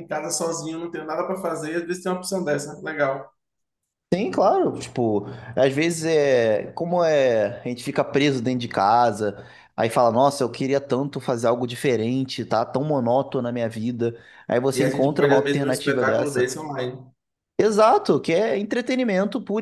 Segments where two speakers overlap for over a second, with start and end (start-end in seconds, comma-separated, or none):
14.7-16.6